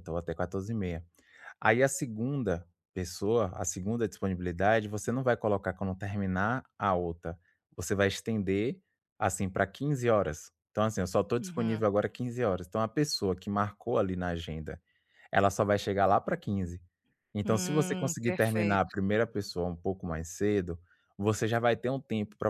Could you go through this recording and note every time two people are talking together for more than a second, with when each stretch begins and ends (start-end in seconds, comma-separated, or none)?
17.4-18.9